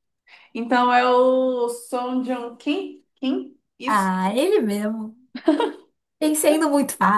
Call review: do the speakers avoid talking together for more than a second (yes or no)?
yes